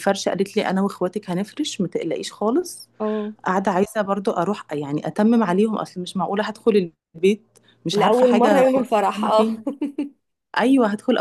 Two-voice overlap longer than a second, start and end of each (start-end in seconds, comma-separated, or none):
7.9-9.5